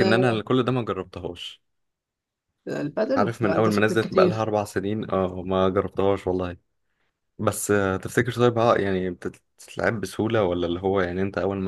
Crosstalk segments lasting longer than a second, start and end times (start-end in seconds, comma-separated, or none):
3.2-4.5